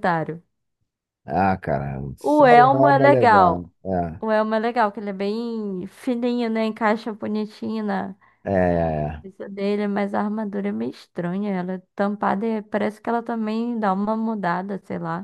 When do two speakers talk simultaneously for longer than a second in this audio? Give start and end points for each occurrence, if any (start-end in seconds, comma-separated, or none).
2.2-3.7